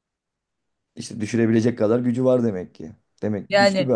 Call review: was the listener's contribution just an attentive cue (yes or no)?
no